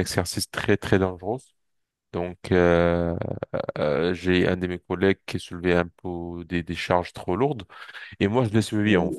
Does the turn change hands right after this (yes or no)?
no